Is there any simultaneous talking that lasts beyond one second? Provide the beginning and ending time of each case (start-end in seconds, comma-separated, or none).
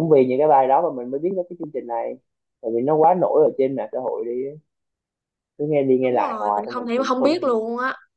6.0-7.6